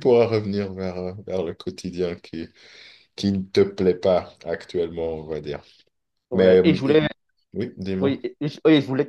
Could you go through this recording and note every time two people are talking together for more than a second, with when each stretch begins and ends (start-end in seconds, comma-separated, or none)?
none